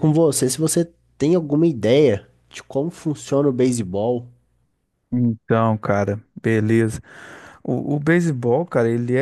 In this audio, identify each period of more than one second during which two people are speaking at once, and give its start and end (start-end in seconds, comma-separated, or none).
none